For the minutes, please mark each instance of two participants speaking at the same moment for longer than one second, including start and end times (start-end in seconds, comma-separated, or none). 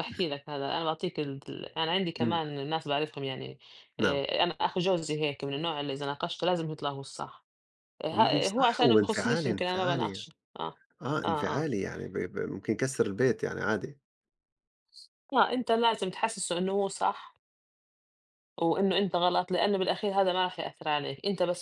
8.1-10.2